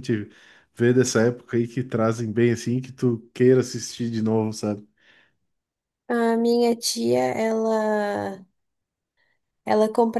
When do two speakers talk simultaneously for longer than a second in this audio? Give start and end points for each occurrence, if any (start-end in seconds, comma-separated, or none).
none